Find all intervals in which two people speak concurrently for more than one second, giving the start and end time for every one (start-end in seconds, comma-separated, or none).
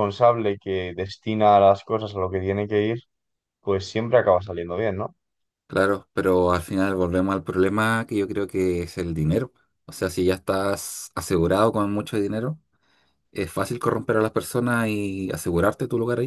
none